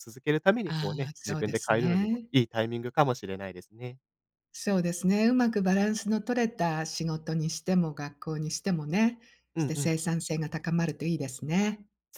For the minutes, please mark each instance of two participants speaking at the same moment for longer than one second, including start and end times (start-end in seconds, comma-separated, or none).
0.7-2.3